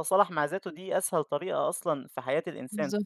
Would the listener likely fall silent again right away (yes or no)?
yes